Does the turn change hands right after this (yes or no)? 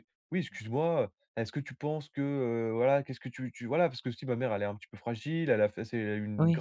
no